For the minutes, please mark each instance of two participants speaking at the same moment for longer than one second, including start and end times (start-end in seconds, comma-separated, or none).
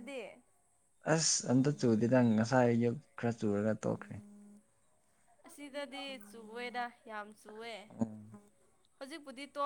none